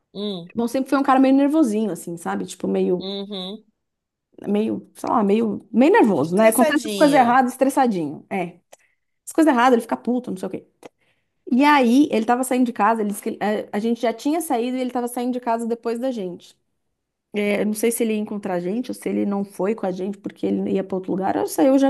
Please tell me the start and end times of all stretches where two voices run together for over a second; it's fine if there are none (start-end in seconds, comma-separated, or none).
6.2-7.4